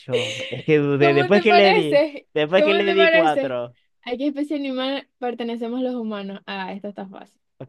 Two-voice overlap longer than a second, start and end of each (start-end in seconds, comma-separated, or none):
1.0-3.6